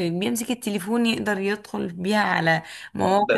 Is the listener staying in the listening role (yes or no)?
no